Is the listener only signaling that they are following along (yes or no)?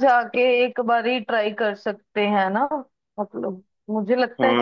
no